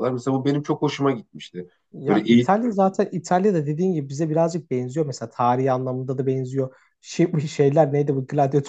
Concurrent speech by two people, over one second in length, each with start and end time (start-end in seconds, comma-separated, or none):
none